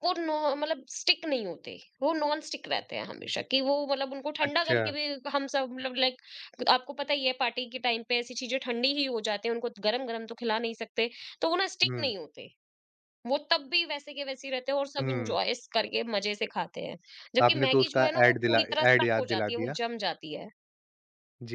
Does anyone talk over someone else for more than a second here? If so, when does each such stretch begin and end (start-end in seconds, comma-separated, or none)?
17.4-19.8